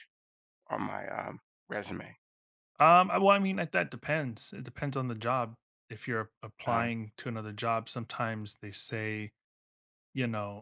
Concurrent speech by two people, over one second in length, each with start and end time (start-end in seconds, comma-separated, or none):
none